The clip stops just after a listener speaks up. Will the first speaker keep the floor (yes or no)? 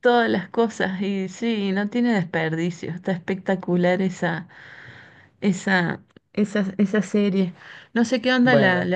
yes